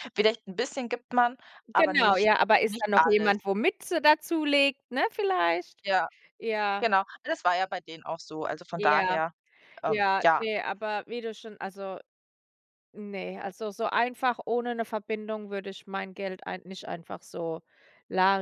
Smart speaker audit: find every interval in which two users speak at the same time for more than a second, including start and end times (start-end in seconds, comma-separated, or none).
1.7-3.4